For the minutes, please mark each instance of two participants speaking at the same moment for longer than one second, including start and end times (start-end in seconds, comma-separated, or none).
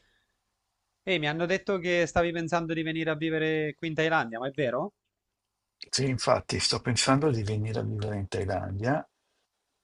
none